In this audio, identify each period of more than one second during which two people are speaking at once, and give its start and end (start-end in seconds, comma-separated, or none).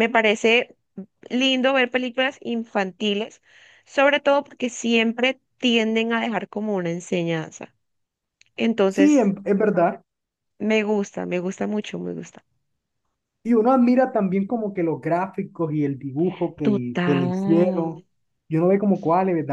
16.6-17.8